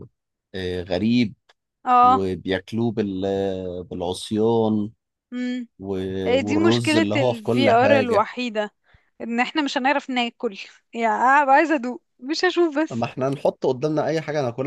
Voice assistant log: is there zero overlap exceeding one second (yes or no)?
no